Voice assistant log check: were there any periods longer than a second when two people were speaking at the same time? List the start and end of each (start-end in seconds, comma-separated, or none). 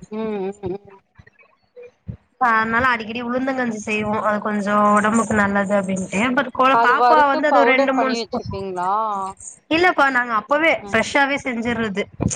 6.8-8.5